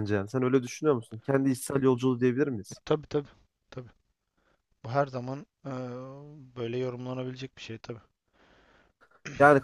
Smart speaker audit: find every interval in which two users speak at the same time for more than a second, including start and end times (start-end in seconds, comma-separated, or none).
none